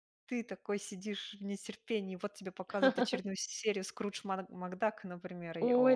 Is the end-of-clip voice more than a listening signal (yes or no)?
yes